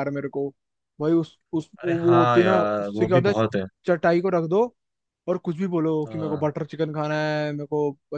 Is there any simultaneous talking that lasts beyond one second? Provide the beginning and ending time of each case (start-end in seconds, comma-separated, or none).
1.8-3.3